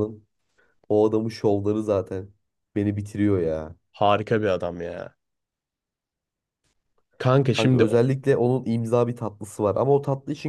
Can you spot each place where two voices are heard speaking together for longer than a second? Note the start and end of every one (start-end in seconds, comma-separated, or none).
none